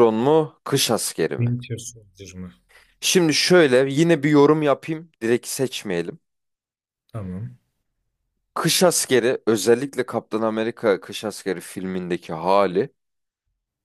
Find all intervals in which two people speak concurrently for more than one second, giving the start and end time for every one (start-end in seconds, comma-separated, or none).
none